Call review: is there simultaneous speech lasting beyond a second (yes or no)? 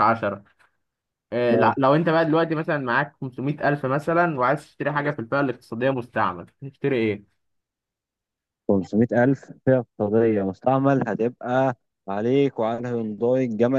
no